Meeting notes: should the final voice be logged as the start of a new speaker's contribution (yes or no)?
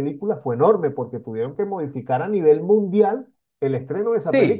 yes